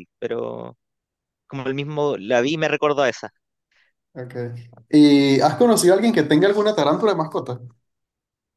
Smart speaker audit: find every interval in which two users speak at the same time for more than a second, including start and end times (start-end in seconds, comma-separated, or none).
none